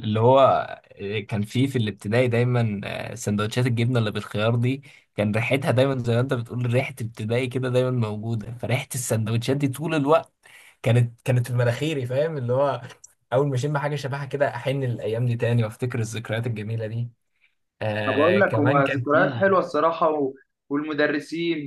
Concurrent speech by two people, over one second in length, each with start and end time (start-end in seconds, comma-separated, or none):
18.1-19.5